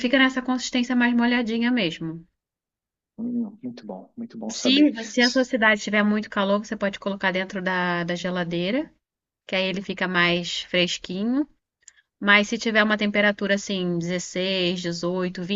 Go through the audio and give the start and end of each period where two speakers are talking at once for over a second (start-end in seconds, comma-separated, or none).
none